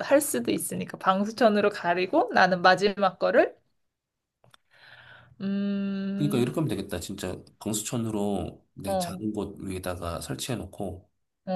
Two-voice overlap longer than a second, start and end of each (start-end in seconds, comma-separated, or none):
none